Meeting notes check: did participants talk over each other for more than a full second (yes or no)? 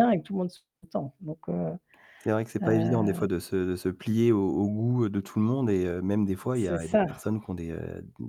no